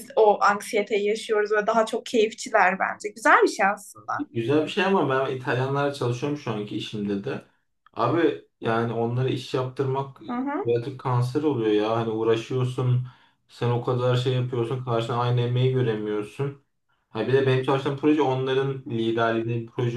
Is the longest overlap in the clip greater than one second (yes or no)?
no